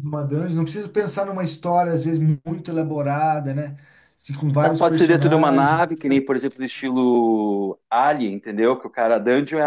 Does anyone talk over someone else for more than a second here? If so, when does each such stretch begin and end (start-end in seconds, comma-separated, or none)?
4.6-5.8